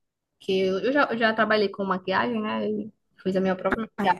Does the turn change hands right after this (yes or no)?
no